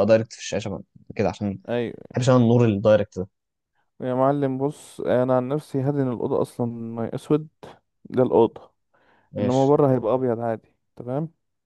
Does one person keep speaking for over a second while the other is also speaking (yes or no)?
no